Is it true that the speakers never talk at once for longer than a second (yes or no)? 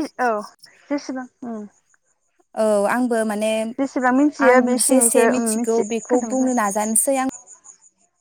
no